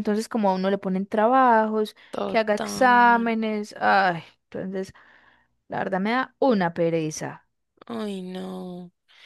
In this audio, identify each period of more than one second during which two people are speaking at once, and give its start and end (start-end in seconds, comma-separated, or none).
2.1-3.3